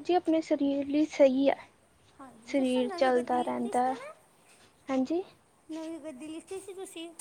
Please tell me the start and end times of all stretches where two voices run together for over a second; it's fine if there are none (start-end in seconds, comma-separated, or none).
2.5-3.9